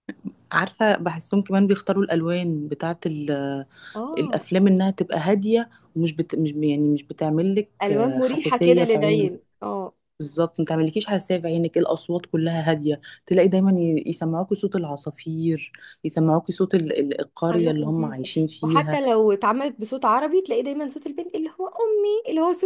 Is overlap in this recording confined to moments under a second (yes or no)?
no